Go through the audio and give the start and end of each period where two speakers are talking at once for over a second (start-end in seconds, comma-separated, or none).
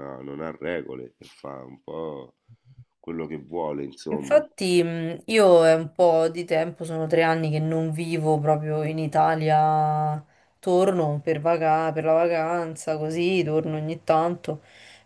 none